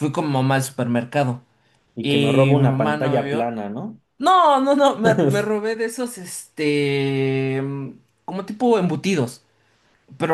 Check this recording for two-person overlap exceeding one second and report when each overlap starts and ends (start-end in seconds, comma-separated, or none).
2.0-3.5